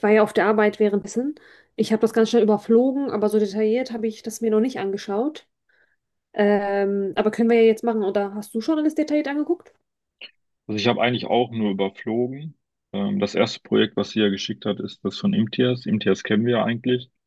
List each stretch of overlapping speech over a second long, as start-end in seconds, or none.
none